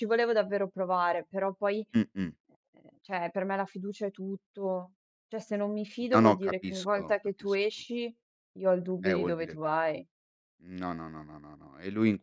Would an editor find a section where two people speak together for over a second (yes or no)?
yes